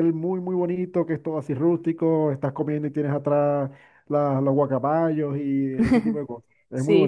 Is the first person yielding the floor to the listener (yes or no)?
yes